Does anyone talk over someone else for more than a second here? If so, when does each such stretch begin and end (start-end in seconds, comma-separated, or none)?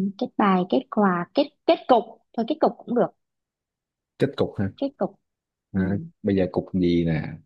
none